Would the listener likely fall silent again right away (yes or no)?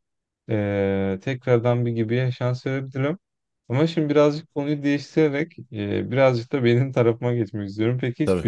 yes